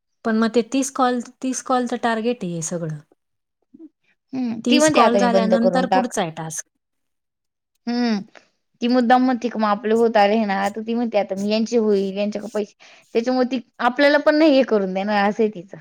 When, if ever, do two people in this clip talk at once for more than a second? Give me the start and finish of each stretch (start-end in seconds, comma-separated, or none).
4.7-6.1